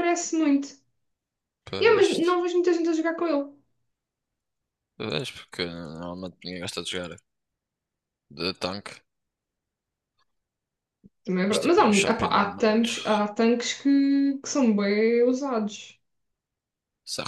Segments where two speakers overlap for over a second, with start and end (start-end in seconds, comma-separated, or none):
11.5-12.9